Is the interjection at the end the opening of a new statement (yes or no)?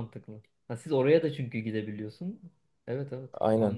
yes